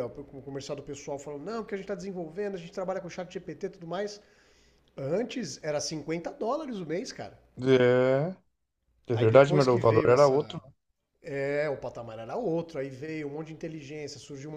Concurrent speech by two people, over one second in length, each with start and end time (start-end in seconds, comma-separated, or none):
9.1-10.4